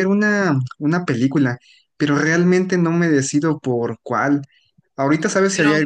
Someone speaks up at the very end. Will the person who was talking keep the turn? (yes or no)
yes